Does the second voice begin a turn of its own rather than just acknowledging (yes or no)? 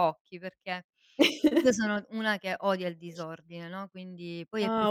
yes